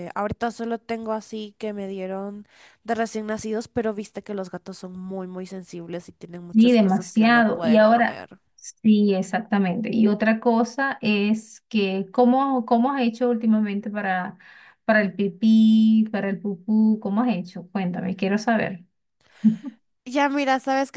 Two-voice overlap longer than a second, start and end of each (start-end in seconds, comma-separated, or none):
6.5-8.3